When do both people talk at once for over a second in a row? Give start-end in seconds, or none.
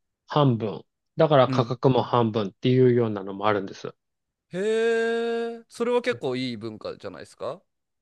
none